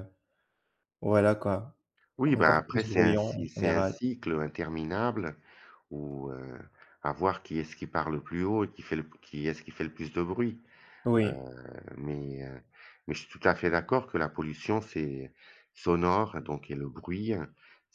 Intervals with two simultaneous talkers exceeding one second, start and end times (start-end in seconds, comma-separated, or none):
2.2-4.0